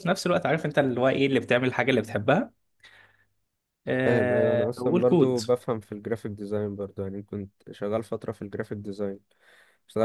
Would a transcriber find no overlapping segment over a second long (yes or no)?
no